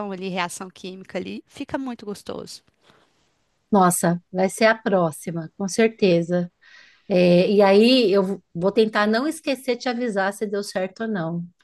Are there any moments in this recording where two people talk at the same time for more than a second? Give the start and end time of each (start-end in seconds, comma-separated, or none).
none